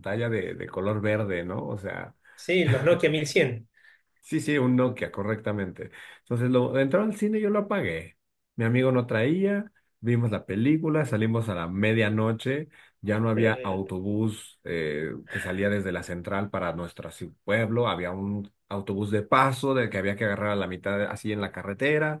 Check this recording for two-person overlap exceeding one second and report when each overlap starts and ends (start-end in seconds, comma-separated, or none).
none